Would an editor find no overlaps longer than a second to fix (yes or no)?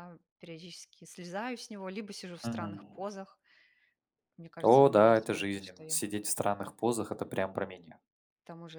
no